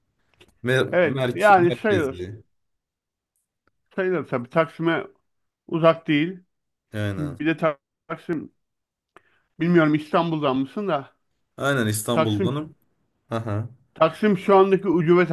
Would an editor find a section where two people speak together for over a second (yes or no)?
yes